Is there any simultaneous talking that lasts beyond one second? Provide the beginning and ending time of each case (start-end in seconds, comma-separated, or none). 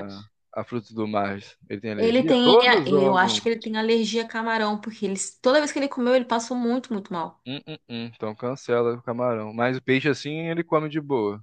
2.0-3.4